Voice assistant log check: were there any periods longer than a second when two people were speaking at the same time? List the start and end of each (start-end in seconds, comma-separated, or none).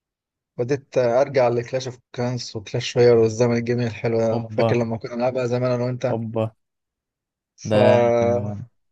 none